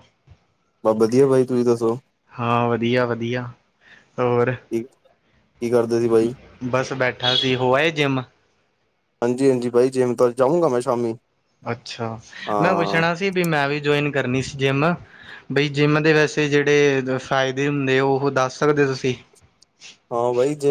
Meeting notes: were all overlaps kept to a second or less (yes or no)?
yes